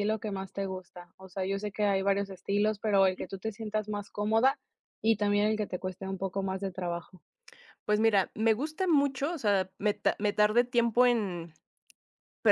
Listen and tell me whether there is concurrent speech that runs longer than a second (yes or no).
no